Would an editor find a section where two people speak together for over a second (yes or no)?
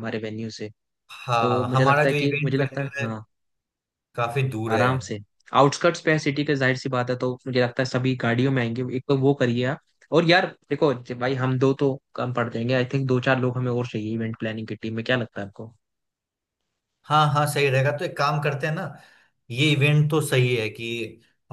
yes